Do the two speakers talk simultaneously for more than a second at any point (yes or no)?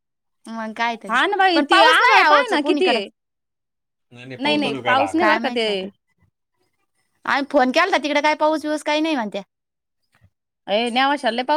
yes